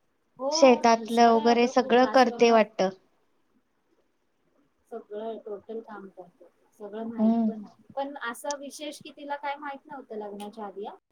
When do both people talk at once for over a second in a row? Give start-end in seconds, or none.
1.0-2.6